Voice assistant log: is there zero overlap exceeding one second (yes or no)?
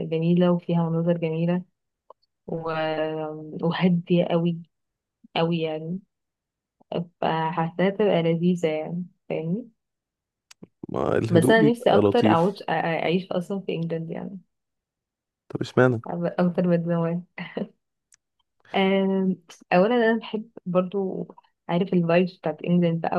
no